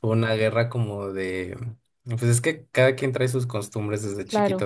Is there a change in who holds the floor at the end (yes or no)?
no